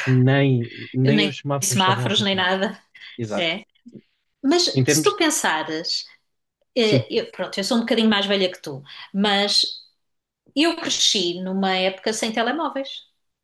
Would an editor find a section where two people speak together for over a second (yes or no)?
yes